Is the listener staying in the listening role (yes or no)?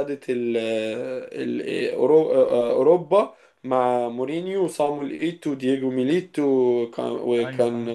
yes